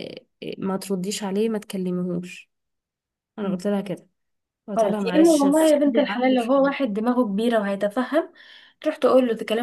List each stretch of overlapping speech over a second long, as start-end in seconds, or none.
4.7-6.9